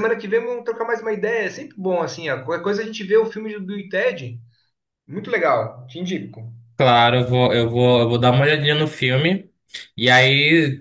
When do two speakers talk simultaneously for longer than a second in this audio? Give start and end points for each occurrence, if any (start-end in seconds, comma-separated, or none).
none